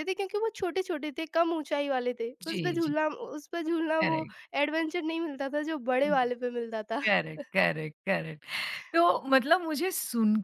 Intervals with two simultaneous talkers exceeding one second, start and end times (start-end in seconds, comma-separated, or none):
none